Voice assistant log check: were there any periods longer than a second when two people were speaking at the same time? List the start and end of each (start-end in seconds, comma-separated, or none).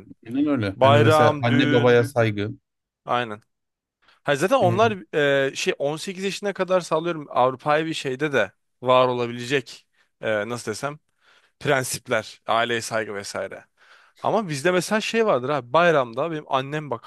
0.8-2.0